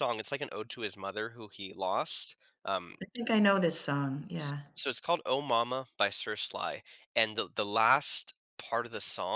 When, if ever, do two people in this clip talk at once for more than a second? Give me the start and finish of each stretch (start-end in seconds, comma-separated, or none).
none